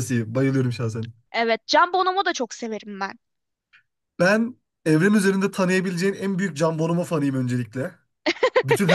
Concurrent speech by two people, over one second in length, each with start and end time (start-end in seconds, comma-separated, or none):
none